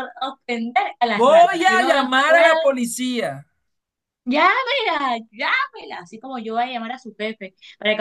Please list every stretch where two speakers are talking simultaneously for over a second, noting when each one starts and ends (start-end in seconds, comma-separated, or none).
1.1-2.5